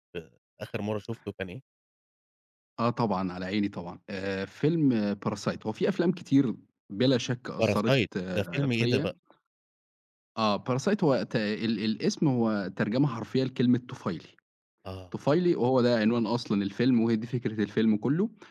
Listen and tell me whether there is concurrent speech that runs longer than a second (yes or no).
yes